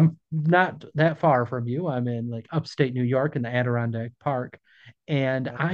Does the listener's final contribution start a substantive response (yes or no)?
no